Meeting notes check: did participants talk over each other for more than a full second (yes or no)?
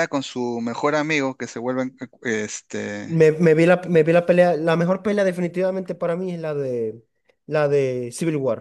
no